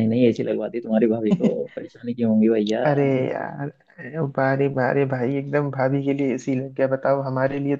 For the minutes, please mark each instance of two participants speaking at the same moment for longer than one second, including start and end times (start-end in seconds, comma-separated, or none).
none